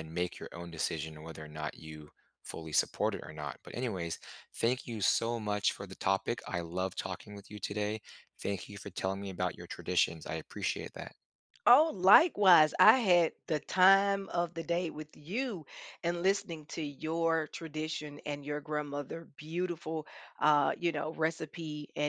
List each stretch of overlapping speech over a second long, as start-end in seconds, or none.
none